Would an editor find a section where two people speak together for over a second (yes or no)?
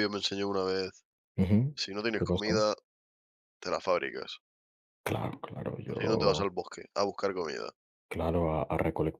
no